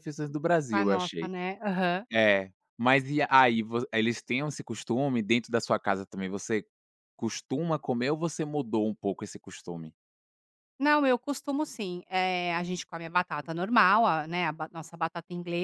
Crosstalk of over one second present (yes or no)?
no